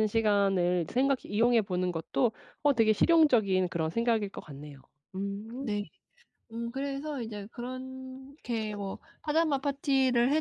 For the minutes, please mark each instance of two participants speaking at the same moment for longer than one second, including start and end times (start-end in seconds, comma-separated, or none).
none